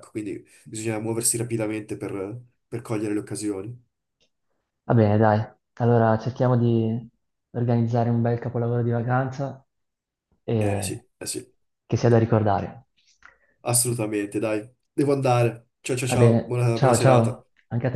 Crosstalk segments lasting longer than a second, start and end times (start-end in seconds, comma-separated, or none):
16.1-17.4